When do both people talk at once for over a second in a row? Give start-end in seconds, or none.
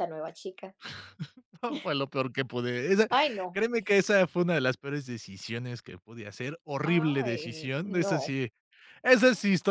6.8-8.4